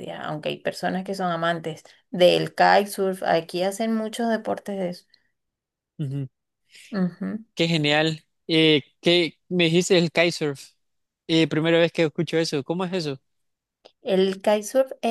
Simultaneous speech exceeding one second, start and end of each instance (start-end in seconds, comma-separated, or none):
none